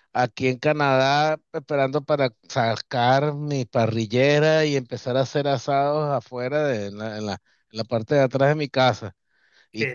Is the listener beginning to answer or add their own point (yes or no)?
no